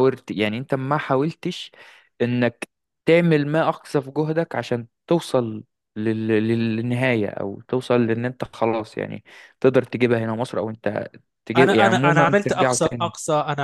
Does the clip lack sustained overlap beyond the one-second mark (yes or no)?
no